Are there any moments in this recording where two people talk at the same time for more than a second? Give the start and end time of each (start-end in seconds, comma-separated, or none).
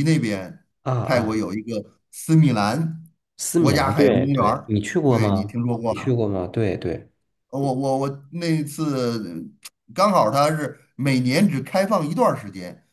3.5-6.2